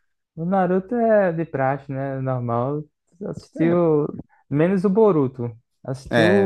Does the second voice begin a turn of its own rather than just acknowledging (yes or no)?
yes